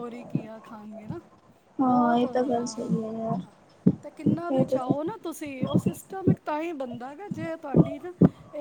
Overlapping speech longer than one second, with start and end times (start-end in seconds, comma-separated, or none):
2.2-3.5